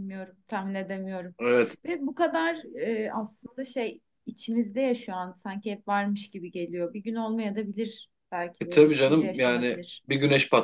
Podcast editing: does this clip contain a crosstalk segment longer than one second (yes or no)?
yes